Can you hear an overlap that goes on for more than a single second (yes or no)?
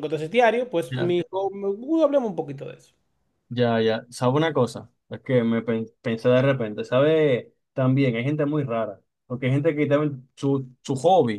no